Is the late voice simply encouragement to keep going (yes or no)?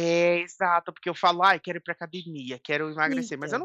yes